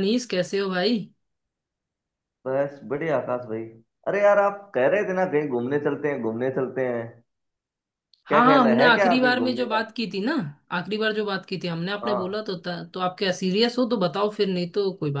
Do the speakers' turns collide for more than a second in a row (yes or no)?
yes